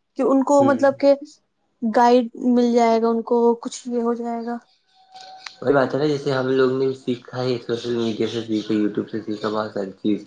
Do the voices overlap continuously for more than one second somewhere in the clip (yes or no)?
no